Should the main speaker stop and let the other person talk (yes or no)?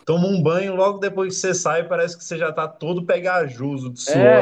yes